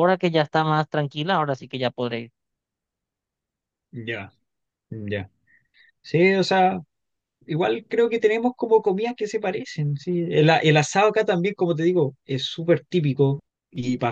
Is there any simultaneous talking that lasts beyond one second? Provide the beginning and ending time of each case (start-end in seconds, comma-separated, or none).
none